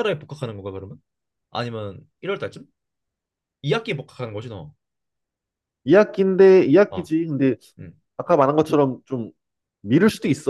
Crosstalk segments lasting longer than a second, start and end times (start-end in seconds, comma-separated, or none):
none